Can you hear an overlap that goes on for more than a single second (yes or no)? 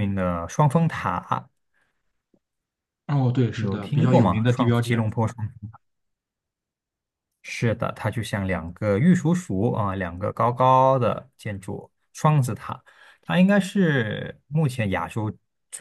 yes